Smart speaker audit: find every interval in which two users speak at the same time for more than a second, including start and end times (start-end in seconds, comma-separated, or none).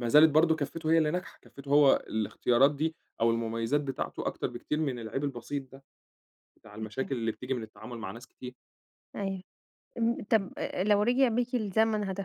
none